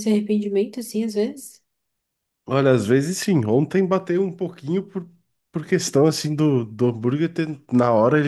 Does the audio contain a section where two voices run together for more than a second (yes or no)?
no